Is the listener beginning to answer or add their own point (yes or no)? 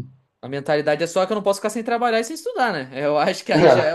no